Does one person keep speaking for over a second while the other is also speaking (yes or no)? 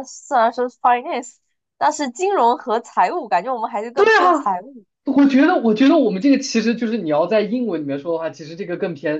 no